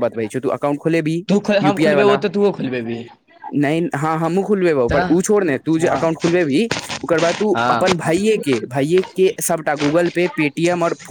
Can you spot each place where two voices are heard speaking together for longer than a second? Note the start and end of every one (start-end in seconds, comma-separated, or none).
none